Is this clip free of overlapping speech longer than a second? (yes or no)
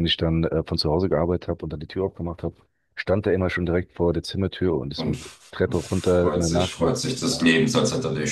no